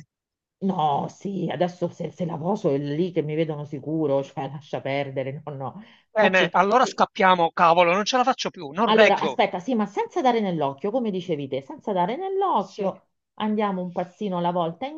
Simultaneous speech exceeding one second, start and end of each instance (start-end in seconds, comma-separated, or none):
none